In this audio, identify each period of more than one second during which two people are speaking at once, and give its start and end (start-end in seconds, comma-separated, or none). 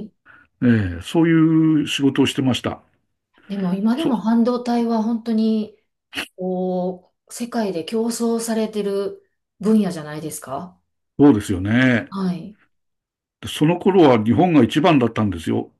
none